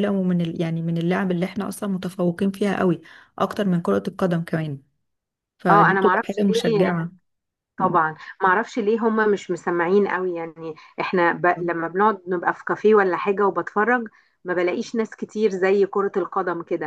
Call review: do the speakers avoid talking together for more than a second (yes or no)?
no